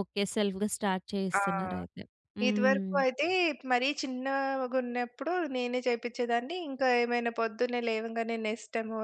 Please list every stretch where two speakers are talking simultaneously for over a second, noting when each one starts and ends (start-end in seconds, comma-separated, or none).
none